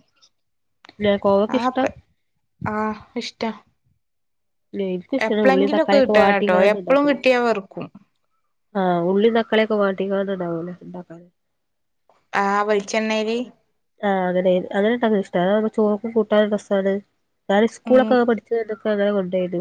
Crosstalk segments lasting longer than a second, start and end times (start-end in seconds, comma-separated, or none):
5.3-7.3